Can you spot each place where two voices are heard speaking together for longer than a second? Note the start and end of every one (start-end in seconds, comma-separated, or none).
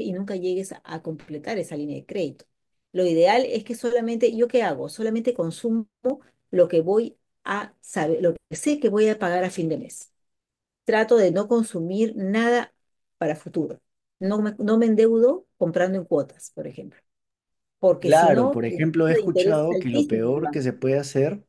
18.0-20.5